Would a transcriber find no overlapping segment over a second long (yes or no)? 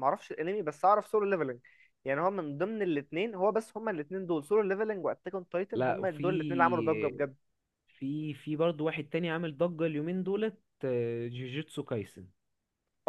no